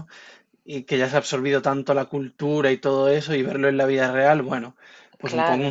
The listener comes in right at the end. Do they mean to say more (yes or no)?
no